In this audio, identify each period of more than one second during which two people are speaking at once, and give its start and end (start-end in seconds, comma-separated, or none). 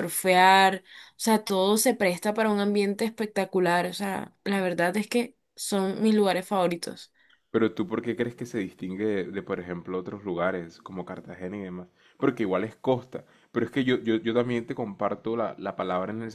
none